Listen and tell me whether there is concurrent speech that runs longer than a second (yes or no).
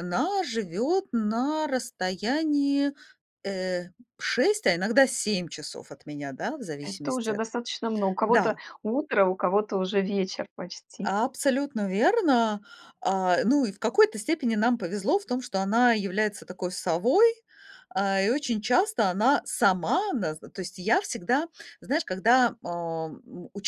no